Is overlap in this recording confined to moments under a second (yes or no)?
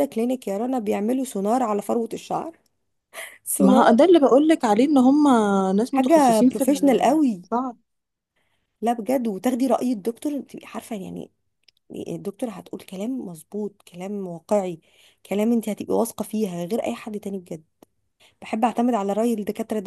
no